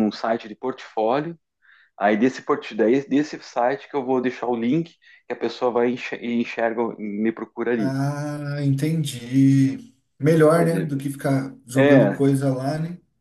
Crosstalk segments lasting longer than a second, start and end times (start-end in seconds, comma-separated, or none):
none